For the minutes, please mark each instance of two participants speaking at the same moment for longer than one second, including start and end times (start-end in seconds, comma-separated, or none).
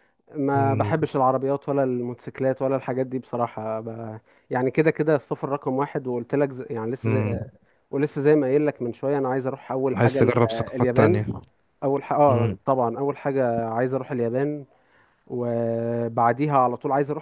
9.9-11.2